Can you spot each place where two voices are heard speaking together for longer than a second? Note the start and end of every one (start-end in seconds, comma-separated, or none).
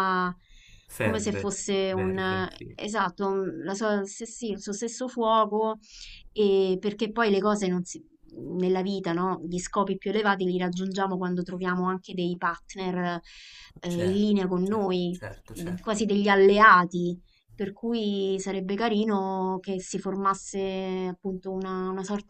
1.0-2.8, 13.9-16.1